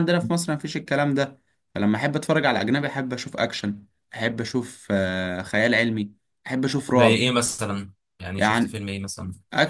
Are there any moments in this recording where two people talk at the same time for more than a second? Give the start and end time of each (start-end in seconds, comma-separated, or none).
none